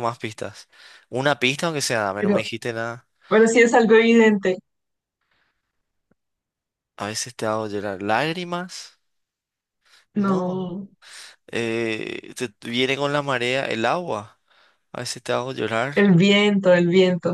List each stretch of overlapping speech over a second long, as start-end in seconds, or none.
none